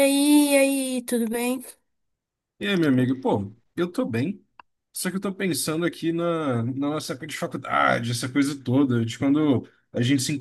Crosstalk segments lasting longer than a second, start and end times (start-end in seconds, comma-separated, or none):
none